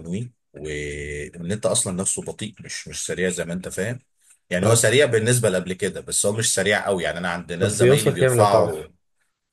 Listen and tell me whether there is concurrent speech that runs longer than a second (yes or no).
yes